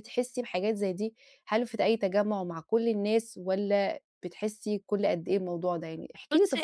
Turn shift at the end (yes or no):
yes